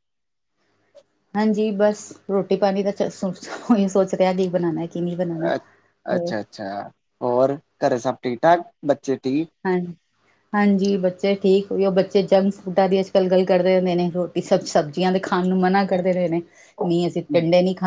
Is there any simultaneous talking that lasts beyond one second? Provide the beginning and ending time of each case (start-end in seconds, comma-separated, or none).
none